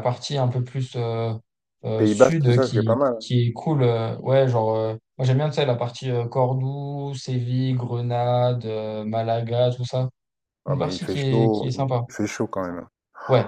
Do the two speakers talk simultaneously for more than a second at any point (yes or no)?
yes